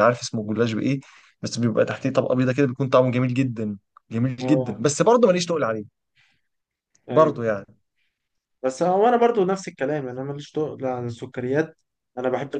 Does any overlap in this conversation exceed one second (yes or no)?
no